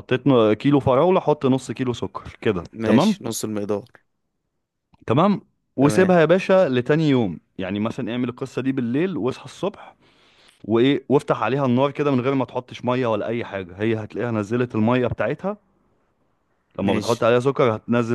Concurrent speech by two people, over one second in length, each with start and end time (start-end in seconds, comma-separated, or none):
none